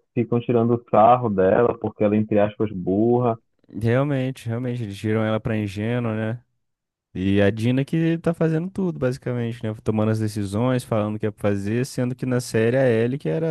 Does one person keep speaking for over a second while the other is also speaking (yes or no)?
no